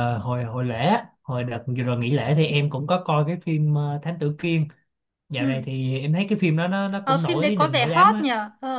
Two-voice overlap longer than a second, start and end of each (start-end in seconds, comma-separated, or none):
7.0-8.3